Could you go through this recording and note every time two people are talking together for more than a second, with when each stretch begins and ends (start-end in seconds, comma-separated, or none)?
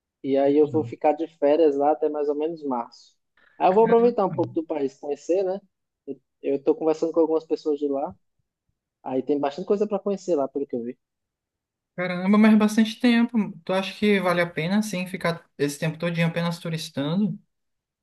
none